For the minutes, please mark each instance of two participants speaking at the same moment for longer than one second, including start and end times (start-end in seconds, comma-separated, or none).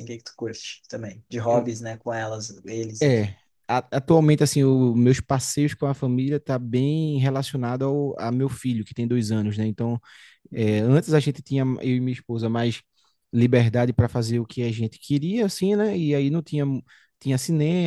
none